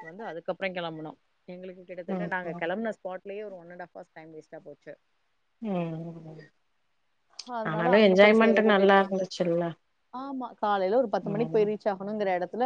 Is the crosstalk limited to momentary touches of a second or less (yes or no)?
no